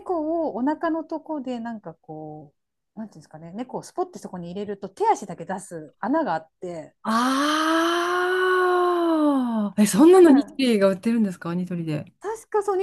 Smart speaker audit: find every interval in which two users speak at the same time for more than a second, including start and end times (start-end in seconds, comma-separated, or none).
none